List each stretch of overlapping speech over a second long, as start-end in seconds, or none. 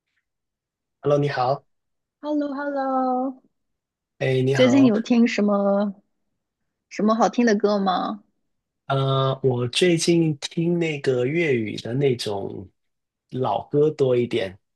none